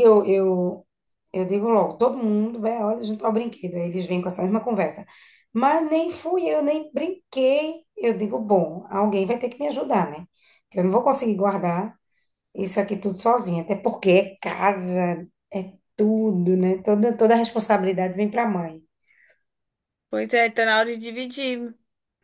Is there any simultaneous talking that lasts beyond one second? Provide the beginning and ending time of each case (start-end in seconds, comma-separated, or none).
none